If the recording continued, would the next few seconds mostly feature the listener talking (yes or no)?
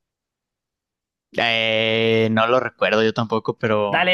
yes